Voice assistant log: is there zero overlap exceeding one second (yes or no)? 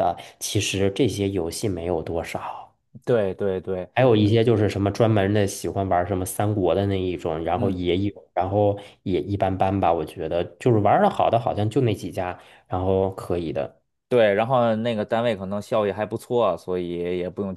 yes